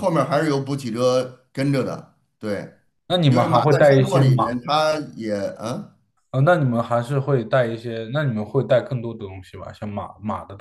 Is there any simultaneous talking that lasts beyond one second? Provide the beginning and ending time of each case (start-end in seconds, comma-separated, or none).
3.3-4.6